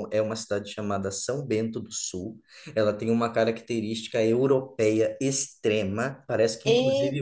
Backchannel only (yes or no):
yes